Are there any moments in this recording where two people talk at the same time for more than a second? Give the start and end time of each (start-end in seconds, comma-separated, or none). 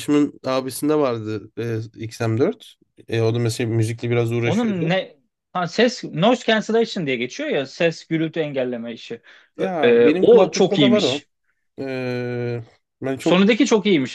9.6-11.2